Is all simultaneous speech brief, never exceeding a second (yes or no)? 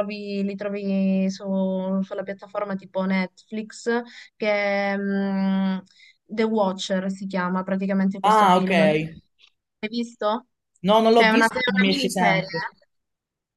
no